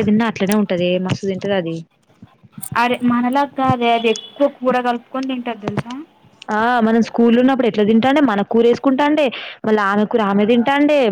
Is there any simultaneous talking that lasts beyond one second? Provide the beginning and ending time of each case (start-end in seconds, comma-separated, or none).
none